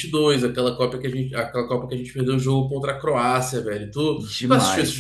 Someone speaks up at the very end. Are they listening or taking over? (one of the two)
taking over